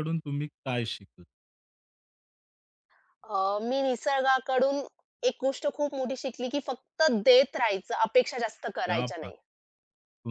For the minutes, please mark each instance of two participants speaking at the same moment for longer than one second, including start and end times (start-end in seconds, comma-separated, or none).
none